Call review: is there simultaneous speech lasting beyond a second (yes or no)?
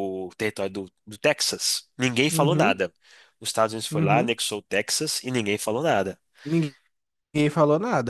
no